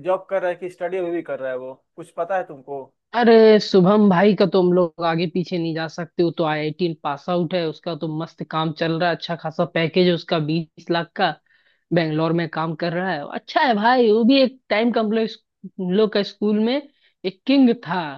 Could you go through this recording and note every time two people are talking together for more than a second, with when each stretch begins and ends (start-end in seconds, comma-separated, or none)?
none